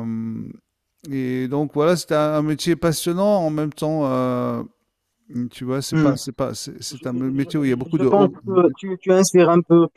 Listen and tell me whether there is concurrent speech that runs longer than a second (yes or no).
yes